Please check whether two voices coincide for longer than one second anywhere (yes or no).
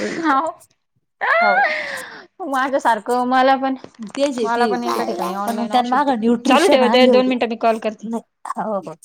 yes